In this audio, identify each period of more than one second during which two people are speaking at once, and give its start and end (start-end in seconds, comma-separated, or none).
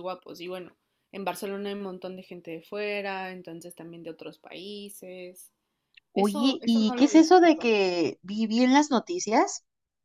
6.2-7.7